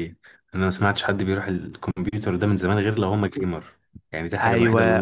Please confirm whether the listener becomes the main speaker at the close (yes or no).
yes